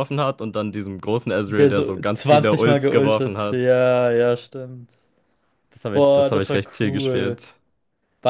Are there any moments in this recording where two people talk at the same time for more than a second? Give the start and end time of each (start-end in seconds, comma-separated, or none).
1.4-3.7, 5.9-7.4